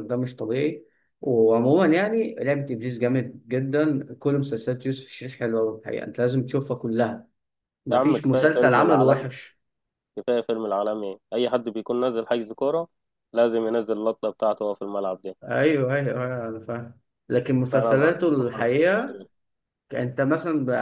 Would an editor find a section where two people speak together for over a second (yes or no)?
yes